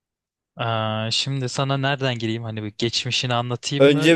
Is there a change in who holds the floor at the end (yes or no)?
yes